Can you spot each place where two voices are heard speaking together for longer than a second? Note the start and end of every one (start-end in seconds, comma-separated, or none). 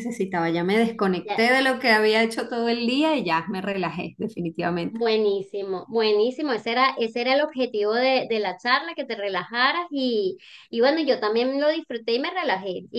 none